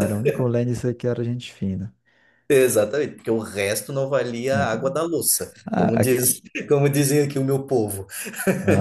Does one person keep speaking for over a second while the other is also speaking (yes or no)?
no